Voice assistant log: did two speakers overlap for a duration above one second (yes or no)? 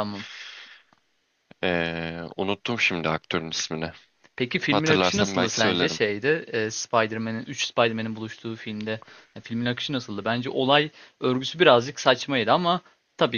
yes